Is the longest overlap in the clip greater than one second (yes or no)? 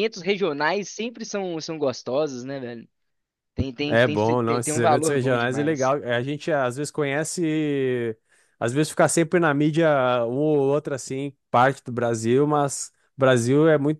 yes